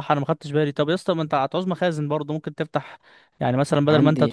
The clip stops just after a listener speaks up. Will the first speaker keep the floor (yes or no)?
yes